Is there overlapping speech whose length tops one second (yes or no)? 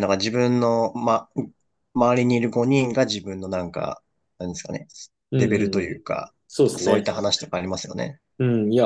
no